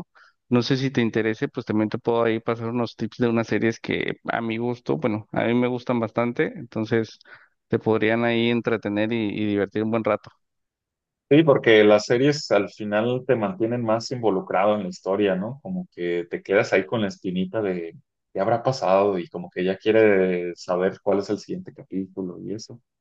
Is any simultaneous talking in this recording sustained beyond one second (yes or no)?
no